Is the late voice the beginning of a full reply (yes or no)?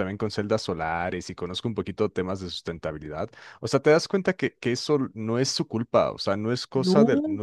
no